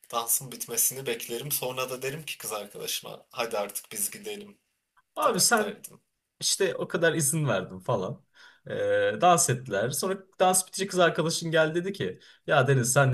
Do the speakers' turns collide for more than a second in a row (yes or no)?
no